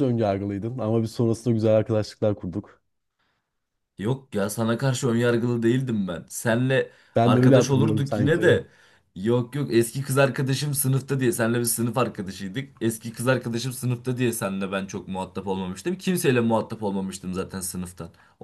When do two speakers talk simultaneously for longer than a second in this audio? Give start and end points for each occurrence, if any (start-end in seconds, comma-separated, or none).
7.2-8.4